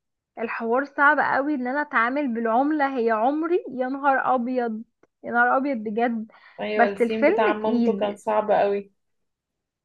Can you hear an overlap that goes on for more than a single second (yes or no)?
yes